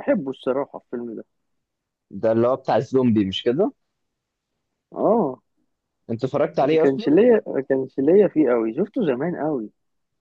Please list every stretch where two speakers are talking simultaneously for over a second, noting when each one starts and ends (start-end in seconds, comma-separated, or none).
none